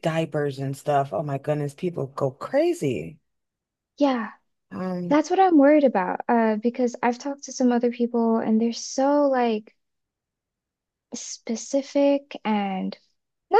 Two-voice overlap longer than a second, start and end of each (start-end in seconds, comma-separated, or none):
none